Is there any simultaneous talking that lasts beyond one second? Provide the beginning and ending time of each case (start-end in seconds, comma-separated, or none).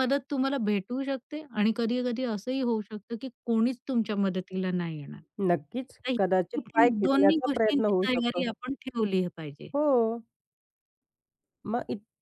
6.1-8.4